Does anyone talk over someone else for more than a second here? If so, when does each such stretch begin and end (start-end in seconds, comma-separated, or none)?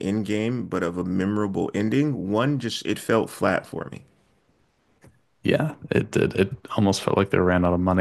none